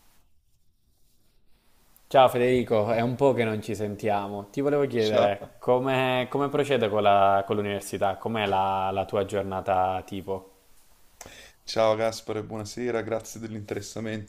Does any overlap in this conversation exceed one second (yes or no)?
no